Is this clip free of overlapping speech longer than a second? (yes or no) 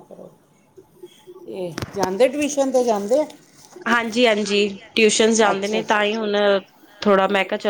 yes